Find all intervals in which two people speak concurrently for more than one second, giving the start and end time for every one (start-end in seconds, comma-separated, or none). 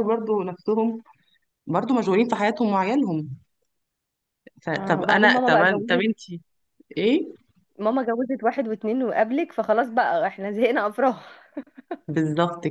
4.7-6.0